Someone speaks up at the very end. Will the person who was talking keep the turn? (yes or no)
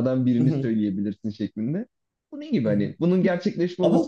yes